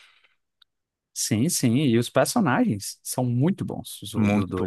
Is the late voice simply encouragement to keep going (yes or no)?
no